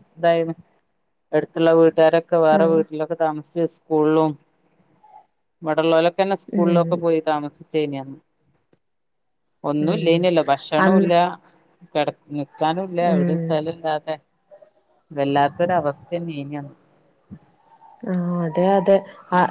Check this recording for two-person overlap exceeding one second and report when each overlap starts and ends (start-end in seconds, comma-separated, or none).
none